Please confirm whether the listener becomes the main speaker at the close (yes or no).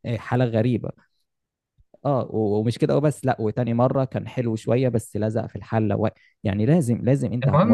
yes